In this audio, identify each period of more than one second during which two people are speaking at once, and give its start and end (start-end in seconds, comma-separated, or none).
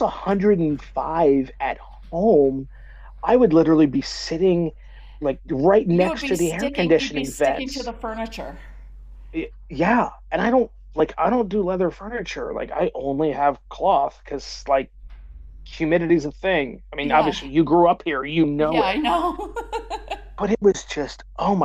5.9-7.9